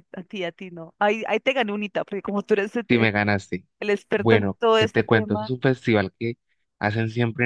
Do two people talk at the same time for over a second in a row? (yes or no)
yes